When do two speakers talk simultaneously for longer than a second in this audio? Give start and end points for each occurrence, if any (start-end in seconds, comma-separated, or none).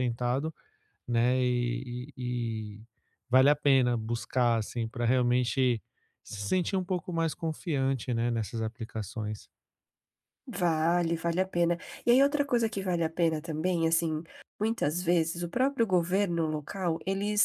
none